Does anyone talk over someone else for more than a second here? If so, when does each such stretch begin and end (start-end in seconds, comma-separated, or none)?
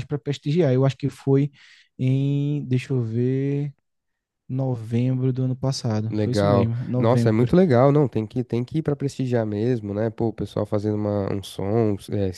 6.1-7.5